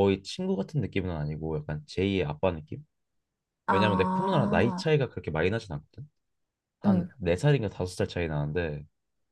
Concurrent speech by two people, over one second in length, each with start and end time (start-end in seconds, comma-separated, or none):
3.7-4.9